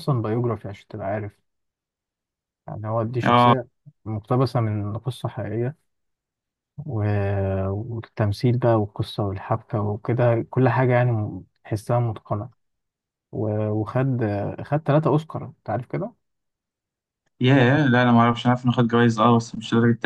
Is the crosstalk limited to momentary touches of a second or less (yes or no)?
yes